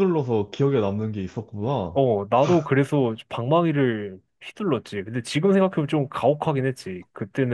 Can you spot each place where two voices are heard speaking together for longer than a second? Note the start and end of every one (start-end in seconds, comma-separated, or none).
none